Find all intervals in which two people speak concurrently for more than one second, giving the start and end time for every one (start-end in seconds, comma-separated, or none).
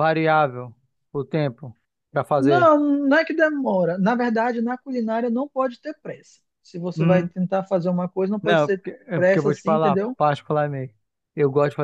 8.4-10.2